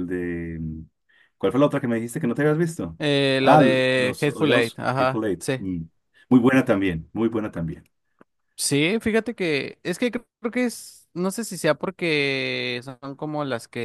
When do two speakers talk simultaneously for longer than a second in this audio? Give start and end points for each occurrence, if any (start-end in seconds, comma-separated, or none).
3.4-5.6